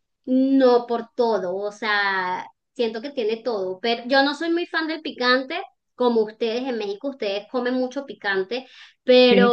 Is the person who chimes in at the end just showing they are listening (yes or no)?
yes